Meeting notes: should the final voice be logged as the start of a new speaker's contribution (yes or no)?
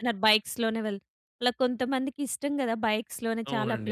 yes